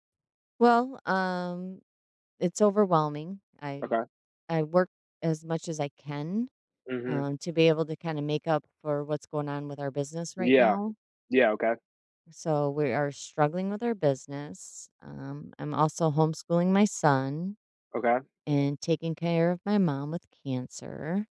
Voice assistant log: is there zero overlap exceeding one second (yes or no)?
yes